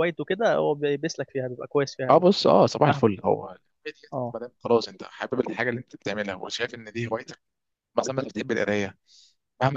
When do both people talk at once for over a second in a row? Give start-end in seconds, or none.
none